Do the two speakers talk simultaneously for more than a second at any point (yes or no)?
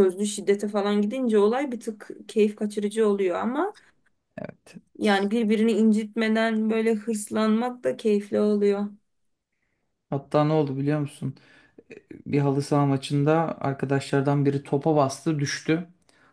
no